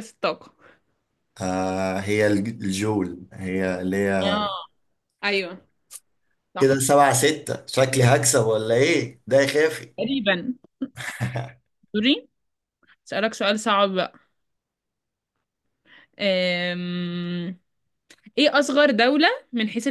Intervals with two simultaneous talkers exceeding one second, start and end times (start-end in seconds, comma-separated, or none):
none